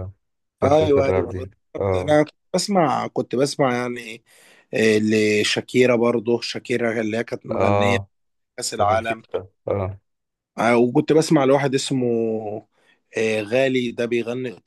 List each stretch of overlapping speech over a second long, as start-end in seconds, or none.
0.6-2.2